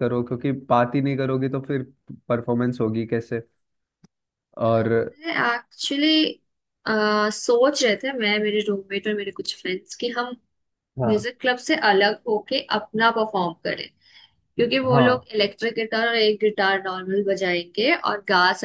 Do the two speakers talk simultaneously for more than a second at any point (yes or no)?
no